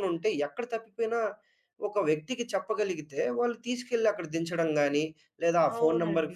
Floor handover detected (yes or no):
no